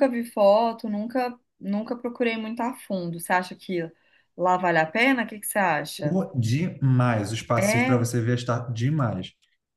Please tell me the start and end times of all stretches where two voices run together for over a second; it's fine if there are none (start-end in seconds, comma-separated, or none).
none